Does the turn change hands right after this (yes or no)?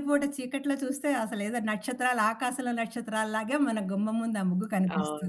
yes